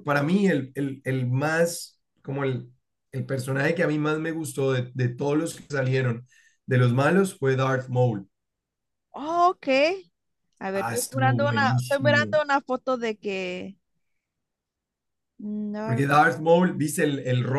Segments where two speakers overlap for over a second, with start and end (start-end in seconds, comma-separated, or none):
10.8-12.4